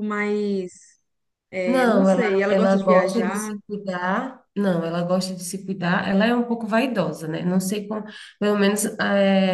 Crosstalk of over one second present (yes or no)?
yes